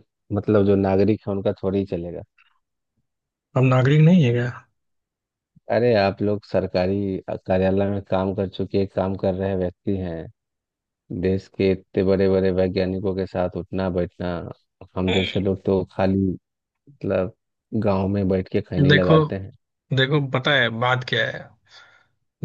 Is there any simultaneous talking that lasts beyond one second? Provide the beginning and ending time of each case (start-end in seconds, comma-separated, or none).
none